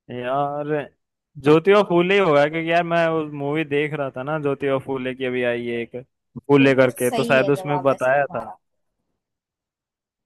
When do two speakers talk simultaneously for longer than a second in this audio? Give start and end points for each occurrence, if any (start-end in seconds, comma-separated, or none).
6.6-8.4